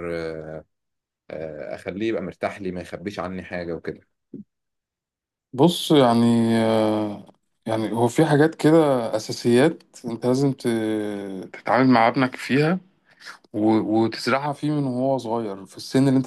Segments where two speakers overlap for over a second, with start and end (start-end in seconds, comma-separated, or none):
none